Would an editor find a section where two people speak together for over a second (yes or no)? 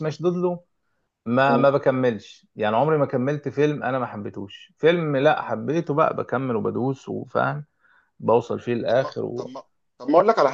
no